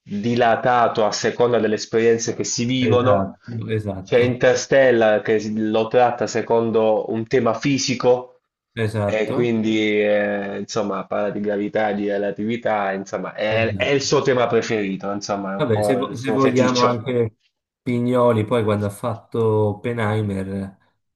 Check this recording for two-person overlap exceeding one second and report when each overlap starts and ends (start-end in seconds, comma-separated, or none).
15.6-17.0